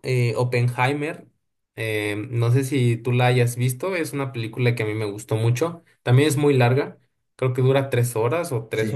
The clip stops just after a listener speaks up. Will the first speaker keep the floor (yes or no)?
yes